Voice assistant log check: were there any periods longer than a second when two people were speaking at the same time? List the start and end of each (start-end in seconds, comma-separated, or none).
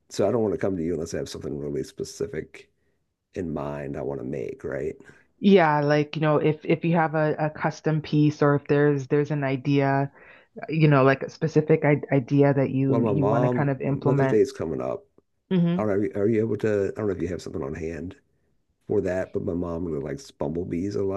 12.9-14.4